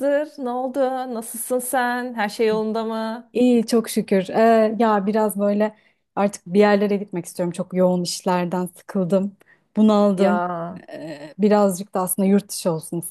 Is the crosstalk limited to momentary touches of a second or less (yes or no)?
yes